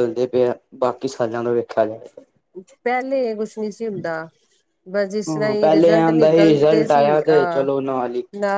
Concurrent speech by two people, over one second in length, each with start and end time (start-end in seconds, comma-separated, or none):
5.3-7.7